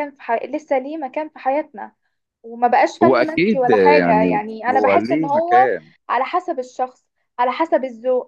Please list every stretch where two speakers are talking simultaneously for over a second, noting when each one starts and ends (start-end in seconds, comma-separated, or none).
3.0-5.7